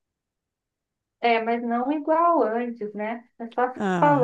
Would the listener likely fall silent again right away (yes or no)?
no